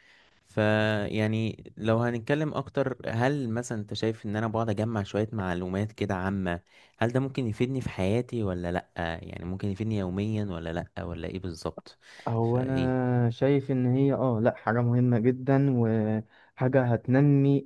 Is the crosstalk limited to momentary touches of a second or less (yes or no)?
yes